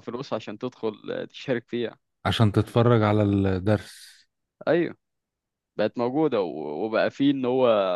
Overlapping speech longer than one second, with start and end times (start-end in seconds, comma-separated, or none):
none